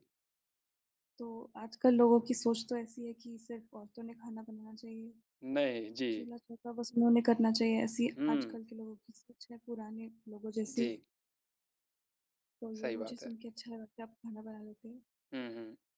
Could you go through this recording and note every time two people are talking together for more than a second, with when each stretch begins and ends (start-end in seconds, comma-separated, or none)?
none